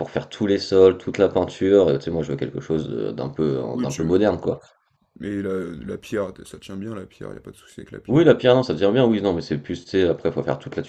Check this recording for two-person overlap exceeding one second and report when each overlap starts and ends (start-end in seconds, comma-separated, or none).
none